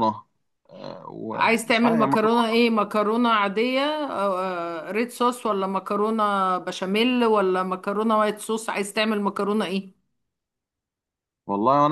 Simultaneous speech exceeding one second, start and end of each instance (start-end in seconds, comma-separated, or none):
1.3-2.6